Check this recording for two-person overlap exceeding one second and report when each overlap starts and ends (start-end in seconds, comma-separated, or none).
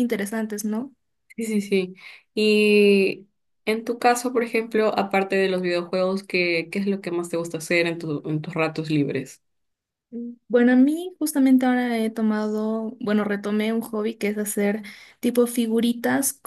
none